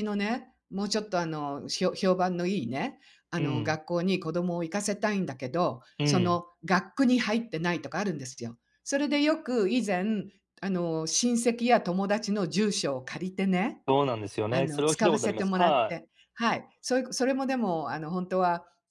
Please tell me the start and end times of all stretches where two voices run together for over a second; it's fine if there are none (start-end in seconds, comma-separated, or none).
14.5-16.0